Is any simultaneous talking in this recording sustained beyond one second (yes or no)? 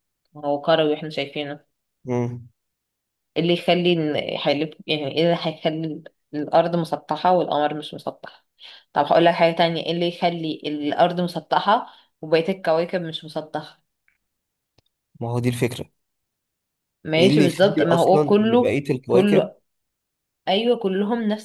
yes